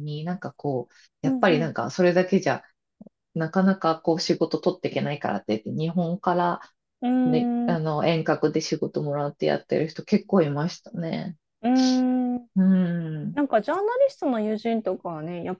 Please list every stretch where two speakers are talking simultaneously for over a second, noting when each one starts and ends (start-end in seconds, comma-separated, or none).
none